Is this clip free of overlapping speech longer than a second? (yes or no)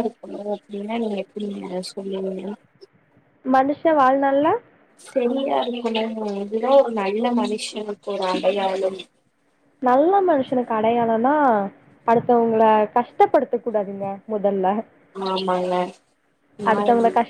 yes